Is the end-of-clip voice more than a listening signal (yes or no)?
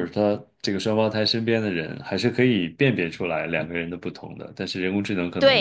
yes